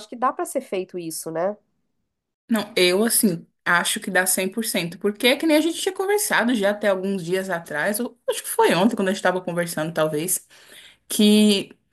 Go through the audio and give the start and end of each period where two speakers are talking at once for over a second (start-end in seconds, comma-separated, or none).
none